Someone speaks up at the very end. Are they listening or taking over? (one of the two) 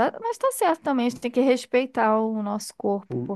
listening